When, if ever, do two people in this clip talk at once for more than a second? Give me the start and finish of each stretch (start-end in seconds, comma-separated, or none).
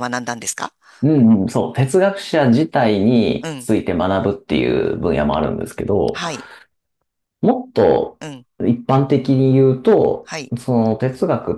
none